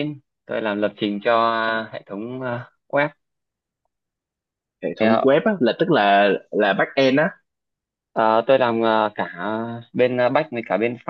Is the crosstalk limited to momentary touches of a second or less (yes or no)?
yes